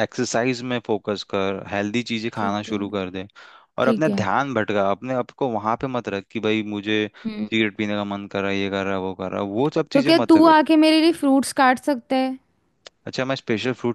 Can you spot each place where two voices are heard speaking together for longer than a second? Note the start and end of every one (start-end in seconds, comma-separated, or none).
none